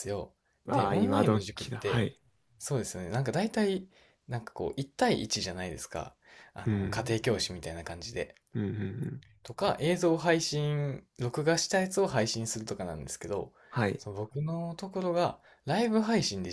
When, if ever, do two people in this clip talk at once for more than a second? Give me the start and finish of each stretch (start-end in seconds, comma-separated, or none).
0.7-2.1